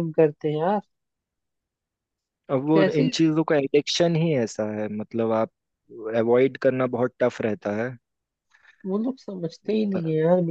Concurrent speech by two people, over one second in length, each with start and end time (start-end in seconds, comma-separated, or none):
none